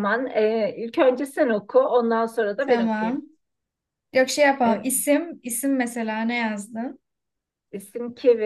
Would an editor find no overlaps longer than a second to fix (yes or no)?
yes